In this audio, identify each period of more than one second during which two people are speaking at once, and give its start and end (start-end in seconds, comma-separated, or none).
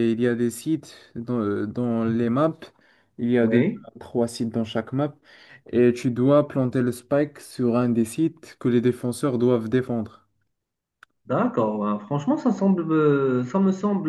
none